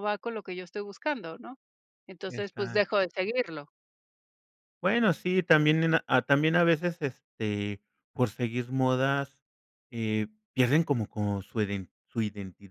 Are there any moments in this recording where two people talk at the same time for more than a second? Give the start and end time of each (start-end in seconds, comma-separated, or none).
none